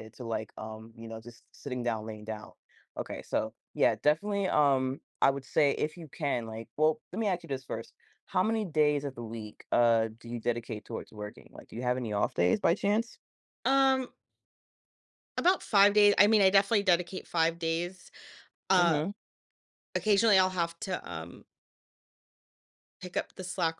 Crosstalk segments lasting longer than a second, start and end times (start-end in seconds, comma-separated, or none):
none